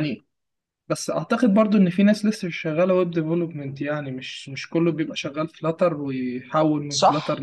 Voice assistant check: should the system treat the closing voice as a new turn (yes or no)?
yes